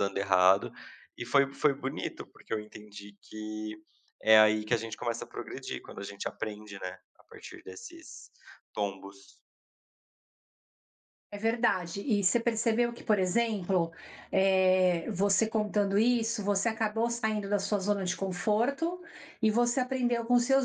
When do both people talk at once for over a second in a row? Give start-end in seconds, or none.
none